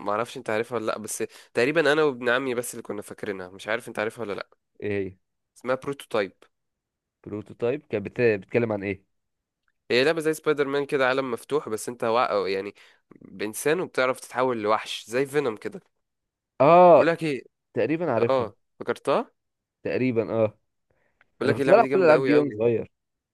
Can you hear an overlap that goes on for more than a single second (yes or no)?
yes